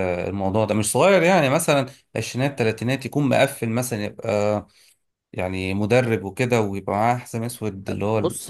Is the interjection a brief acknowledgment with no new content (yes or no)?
no